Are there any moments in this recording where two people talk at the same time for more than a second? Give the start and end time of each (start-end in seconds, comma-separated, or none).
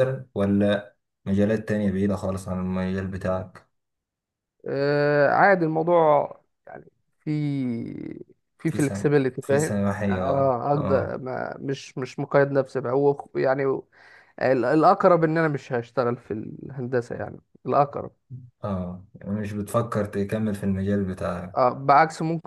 8.7-11.2